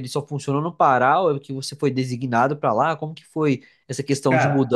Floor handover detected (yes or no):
no